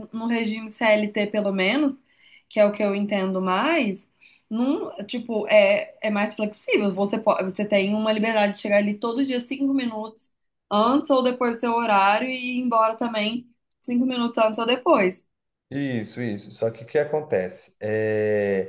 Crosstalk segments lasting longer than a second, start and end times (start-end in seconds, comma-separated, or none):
none